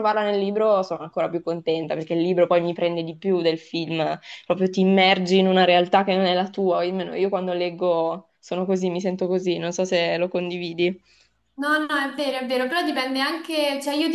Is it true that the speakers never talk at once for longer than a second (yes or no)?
yes